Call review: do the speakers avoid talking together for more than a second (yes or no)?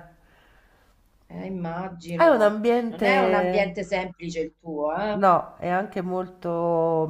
no